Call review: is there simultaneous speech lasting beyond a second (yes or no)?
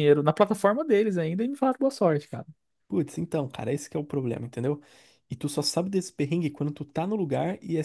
no